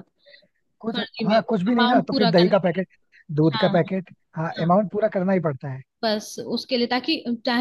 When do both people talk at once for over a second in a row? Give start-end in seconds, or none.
0.9-2.8